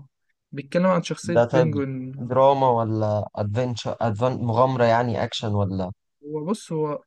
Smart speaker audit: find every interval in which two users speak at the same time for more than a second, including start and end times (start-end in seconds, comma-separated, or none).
none